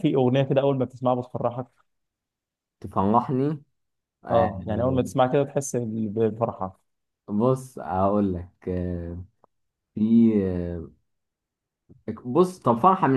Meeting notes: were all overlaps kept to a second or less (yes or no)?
yes